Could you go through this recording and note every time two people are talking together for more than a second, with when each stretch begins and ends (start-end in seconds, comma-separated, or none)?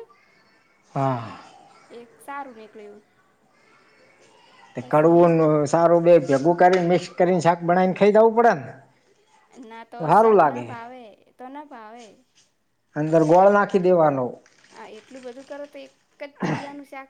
none